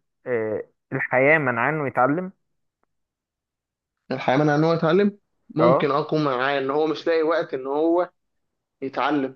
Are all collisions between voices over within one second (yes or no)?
yes